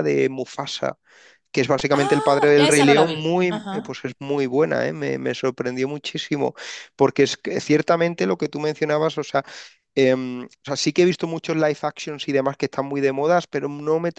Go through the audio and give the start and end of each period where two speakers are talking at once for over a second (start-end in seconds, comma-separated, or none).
1.9-4.0